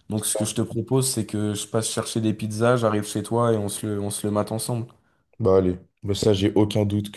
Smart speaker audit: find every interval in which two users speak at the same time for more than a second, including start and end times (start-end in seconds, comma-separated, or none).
none